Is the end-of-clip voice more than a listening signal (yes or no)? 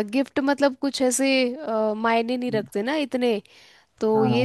yes